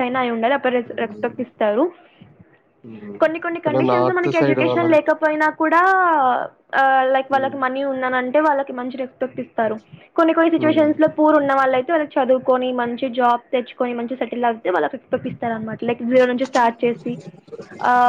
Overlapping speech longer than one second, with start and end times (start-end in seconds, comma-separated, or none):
3.6-5.1